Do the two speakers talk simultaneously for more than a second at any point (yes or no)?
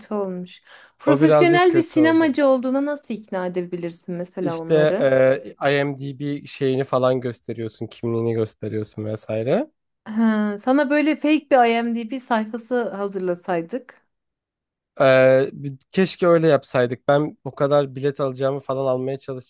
yes